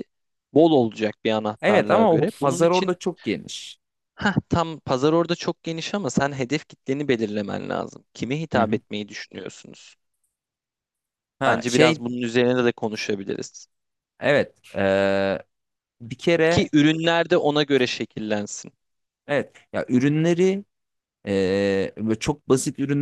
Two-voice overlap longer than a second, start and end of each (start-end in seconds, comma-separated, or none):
1.6-3.0